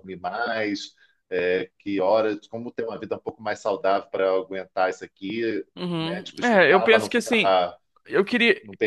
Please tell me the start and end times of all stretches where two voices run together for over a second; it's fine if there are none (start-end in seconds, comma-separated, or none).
6.0-7.6